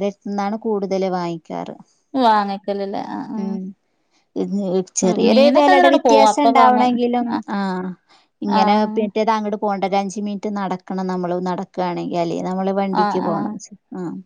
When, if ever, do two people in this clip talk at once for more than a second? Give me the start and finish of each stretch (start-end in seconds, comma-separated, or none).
5.1-6.9